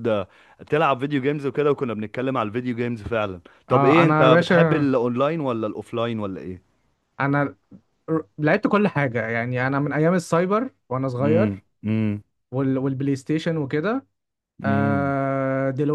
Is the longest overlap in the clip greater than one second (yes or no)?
yes